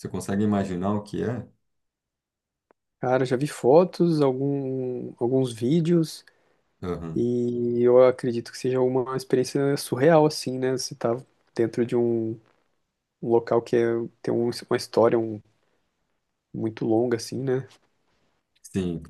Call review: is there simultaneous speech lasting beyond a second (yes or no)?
no